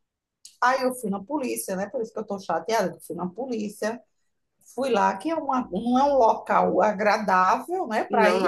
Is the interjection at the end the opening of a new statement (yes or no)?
no